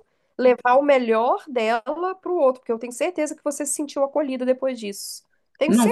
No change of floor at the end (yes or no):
no